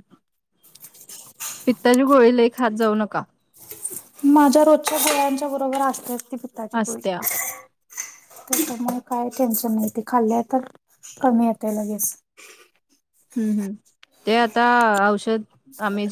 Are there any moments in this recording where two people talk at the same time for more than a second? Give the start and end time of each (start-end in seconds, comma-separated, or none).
none